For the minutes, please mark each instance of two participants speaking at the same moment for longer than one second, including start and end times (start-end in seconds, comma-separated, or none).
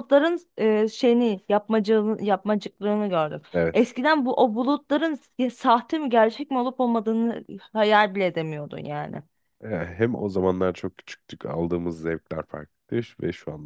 none